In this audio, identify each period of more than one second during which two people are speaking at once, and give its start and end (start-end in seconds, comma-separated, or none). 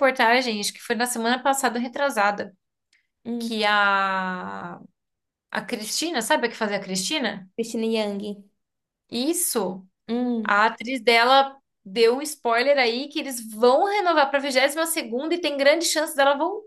none